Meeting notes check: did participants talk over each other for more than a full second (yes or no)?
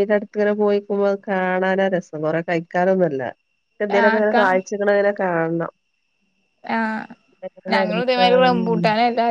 no